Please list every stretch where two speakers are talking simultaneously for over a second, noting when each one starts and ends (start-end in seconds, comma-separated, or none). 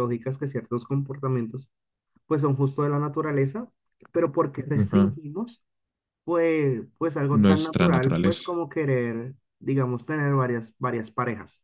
7.3-8.6